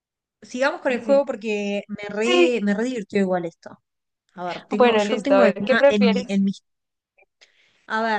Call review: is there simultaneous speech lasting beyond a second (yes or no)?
yes